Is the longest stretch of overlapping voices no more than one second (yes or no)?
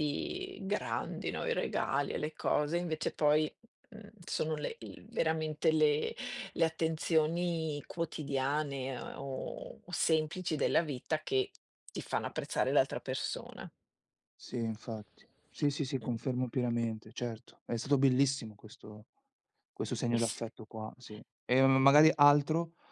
yes